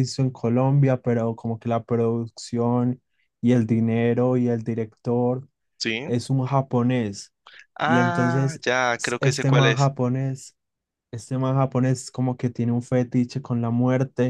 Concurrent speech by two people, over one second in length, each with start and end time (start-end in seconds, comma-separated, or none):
7.8-9.9